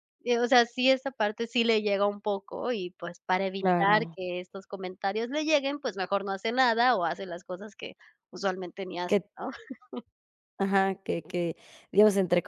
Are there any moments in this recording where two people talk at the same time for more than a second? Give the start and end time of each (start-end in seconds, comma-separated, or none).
none